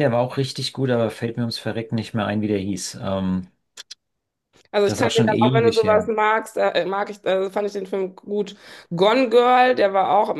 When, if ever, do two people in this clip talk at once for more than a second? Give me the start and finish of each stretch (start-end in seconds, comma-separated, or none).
4.8-6.1